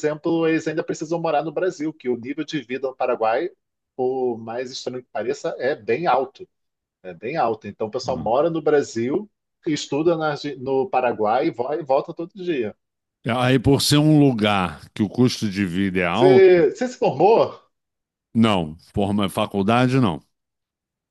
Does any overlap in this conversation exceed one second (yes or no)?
no